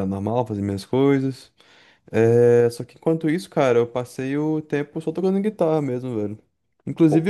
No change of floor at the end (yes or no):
yes